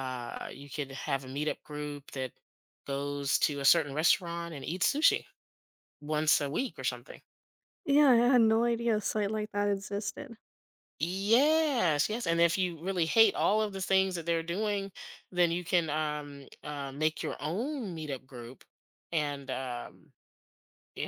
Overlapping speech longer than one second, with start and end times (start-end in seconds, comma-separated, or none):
none